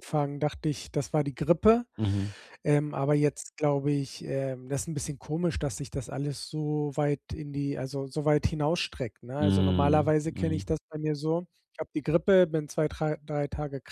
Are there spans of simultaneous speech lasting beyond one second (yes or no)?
yes